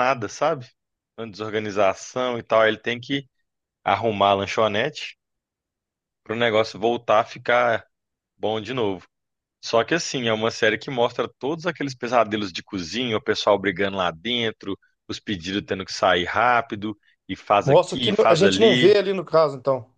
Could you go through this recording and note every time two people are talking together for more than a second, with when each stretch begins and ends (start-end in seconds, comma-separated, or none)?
17.6-19.0